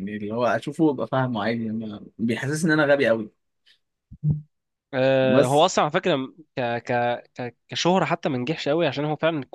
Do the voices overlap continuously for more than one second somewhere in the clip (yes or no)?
no